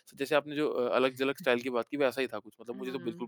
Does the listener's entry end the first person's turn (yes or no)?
no